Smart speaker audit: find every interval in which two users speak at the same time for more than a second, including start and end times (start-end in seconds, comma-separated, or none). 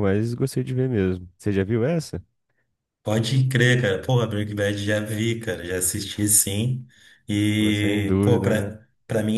7.6-8.8